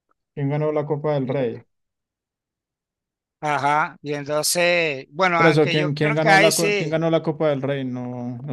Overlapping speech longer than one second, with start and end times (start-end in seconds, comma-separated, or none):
5.3-7.0